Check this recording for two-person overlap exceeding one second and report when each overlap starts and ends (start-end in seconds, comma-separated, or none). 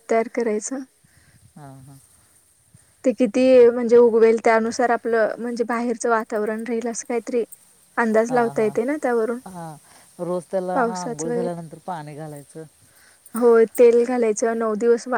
none